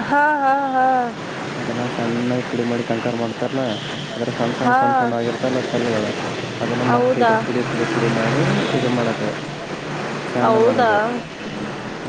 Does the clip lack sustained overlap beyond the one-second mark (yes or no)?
yes